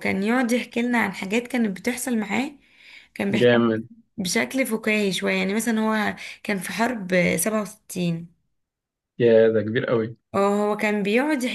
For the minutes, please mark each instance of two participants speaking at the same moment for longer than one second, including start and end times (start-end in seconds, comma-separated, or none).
none